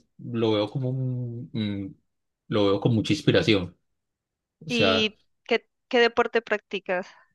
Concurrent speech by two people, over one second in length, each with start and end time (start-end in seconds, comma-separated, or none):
none